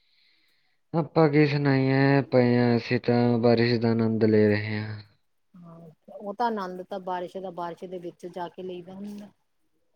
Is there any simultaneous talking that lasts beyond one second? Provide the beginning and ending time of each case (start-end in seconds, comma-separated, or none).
none